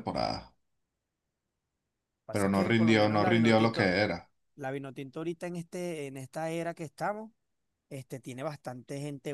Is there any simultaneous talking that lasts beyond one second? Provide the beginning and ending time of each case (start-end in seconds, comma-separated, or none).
2.3-4.0